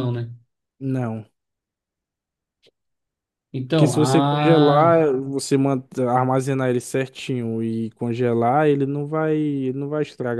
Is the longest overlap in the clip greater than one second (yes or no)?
yes